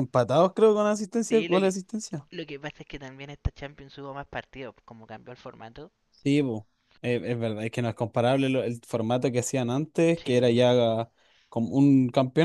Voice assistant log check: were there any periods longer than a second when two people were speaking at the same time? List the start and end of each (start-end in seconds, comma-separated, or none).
none